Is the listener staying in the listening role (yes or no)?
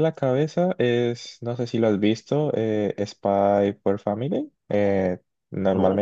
yes